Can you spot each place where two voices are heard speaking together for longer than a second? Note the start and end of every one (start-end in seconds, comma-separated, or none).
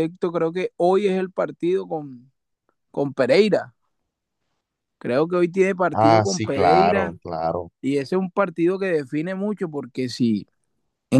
5.9-7.2